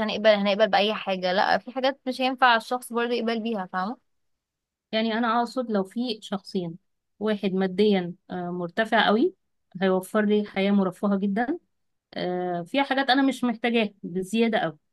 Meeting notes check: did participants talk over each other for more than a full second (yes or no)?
no